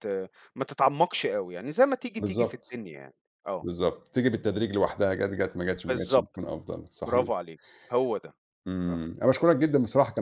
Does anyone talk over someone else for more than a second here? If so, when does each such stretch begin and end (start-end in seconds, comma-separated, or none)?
none